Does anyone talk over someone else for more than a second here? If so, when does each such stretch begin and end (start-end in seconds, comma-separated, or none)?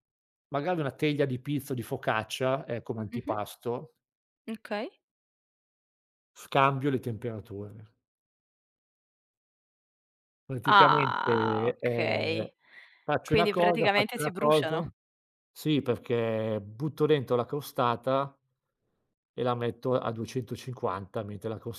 10.6-12.5, 13.2-14.8